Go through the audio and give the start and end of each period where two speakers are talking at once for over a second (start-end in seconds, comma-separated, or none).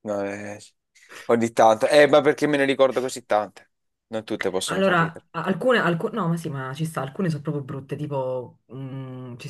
none